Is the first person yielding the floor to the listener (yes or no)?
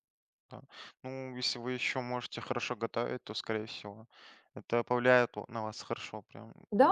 yes